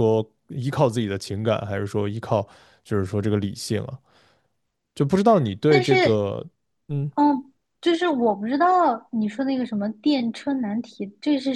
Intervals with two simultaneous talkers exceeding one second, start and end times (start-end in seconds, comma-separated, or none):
none